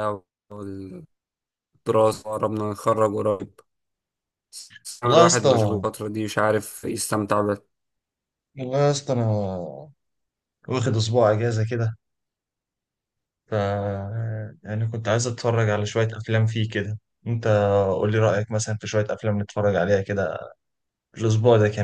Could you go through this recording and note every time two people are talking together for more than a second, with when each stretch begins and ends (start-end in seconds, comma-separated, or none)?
none